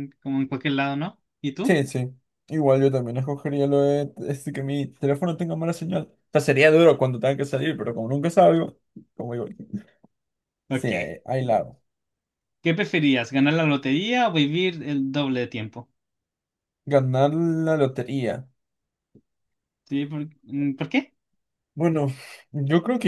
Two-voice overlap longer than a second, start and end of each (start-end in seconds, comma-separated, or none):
none